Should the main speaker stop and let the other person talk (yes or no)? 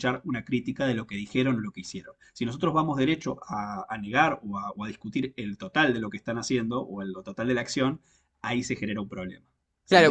yes